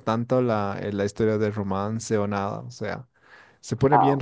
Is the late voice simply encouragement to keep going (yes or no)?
yes